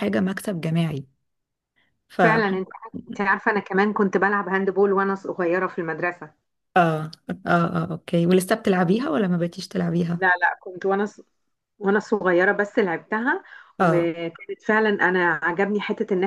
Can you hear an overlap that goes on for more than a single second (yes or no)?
no